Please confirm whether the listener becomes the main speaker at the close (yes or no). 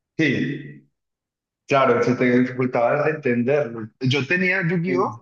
no